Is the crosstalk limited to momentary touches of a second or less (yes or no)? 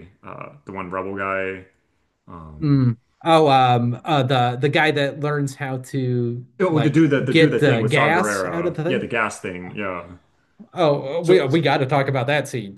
no